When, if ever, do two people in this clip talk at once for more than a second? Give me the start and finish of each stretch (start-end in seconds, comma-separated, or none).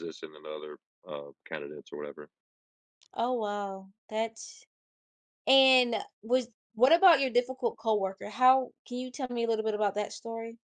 none